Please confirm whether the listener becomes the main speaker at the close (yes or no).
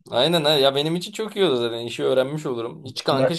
no